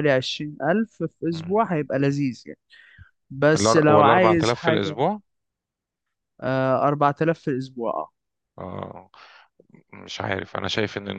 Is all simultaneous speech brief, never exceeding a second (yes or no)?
no